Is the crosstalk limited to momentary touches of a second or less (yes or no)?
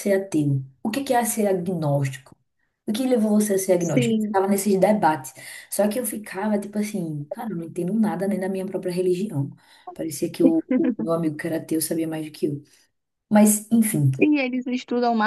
yes